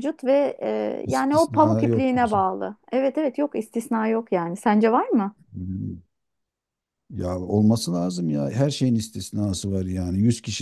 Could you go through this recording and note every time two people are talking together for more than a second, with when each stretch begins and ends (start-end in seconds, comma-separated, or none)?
1.0-2.4